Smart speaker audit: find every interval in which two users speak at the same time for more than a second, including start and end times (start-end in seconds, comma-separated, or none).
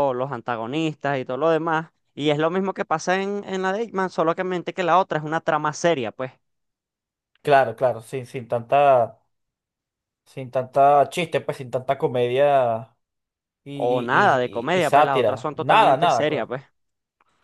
13.7-16.5